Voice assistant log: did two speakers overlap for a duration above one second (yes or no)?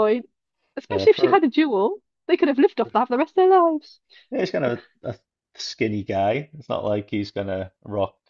no